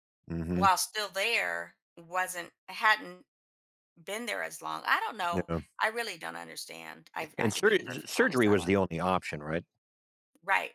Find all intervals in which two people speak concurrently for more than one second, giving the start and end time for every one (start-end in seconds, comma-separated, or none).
7.4-8.8